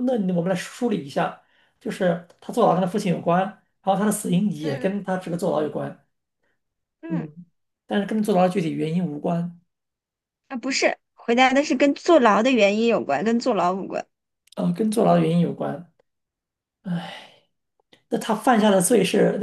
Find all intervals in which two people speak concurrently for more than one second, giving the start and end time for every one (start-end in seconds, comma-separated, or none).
none